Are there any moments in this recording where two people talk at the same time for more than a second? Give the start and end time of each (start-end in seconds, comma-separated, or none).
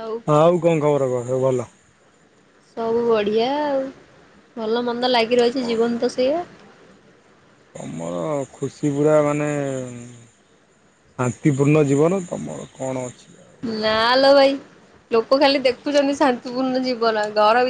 none